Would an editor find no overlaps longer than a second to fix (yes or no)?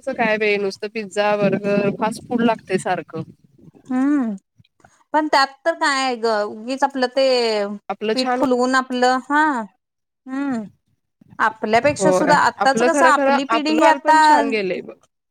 no